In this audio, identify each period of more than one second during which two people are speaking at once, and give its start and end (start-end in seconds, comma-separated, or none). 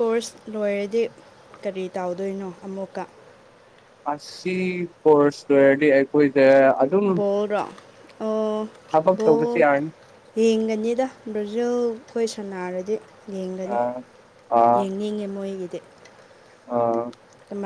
none